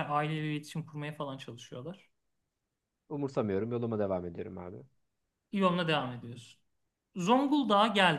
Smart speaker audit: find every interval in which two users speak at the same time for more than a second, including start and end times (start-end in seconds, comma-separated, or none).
none